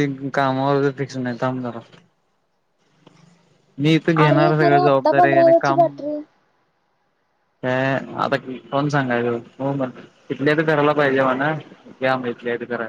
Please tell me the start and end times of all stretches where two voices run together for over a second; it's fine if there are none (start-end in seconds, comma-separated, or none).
4.2-5.8